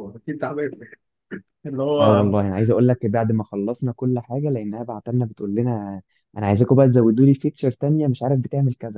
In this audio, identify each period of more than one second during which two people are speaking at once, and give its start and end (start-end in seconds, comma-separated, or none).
none